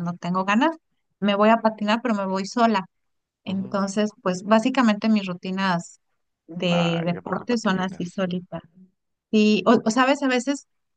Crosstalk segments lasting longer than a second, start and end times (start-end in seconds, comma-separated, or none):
6.6-8.2